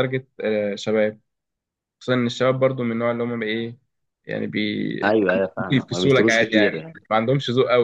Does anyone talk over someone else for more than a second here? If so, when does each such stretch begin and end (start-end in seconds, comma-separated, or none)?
5.6-6.9